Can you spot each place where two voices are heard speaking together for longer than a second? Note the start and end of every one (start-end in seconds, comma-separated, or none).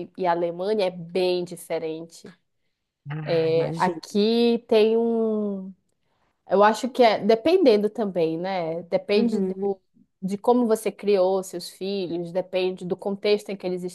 none